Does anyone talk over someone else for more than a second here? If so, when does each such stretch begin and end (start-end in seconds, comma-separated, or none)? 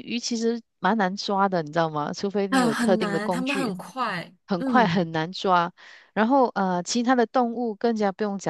2.5-3.7